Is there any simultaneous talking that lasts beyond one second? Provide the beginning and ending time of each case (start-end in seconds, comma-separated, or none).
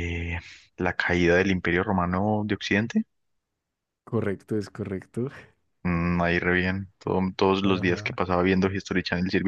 none